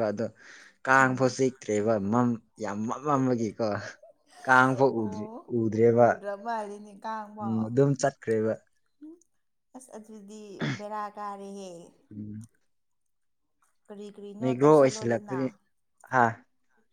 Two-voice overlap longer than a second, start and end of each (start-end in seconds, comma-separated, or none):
none